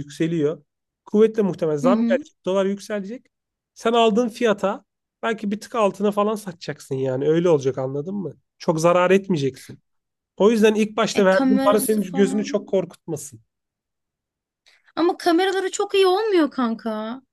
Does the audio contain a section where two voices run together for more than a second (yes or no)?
yes